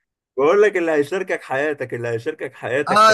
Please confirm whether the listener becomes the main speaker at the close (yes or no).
yes